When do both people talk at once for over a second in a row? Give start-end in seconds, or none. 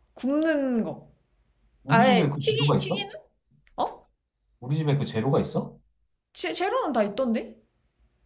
1.9-3.1